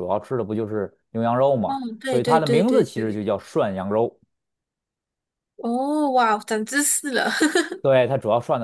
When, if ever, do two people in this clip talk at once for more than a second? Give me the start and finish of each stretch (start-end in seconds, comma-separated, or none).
1.7-3.2